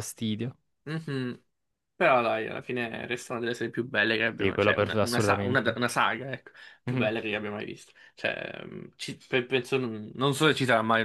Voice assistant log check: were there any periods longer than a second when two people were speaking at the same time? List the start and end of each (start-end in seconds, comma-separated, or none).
4.3-5.8